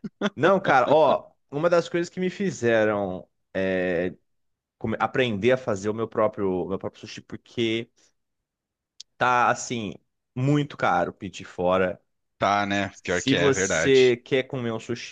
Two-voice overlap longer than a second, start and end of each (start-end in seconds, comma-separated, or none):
12.9-14.2